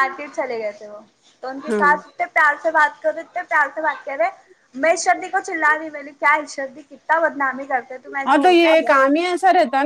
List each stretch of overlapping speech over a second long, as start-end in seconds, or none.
none